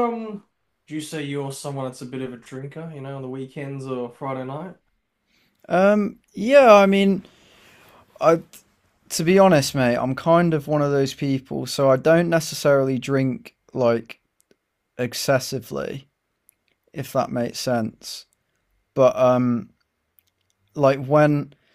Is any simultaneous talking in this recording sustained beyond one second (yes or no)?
no